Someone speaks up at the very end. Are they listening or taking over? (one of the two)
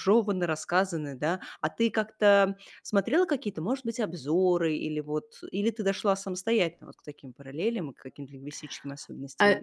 taking over